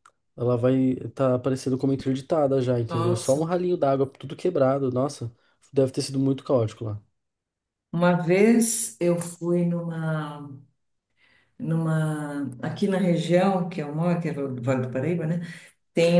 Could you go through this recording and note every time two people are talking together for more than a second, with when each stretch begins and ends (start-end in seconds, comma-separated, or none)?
none